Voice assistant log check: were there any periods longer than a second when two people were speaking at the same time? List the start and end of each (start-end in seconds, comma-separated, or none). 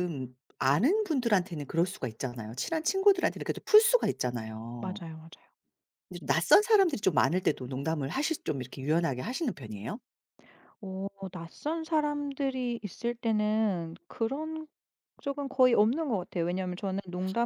none